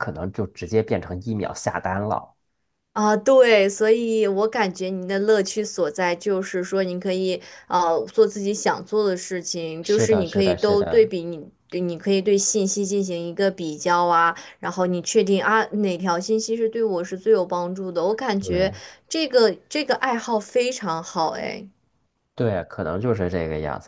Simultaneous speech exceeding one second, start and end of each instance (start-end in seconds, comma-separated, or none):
9.8-11.1